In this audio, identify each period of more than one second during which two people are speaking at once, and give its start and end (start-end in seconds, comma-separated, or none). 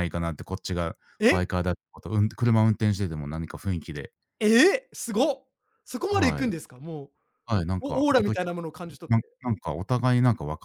7.8-9.4